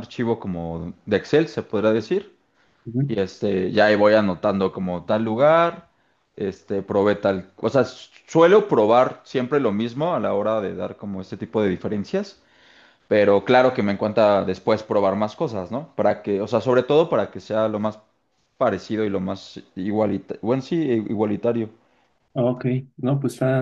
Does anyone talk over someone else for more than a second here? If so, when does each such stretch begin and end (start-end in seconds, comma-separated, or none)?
none